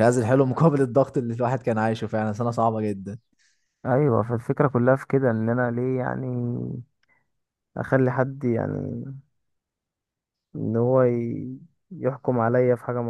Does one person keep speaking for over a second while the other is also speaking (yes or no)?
no